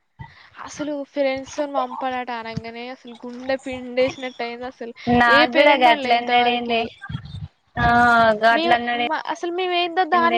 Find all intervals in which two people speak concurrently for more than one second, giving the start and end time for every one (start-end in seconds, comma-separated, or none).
5.4-6.8